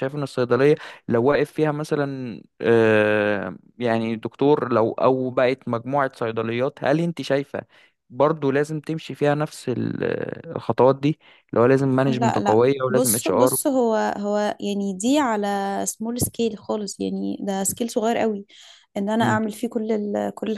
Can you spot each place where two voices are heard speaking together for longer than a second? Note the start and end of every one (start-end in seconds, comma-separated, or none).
12.1-13.6